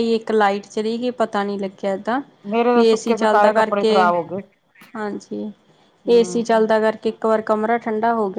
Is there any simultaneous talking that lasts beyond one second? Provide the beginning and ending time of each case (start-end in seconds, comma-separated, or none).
2.7-4.1